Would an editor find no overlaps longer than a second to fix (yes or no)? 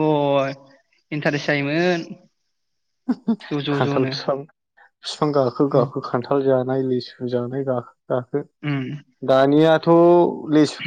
yes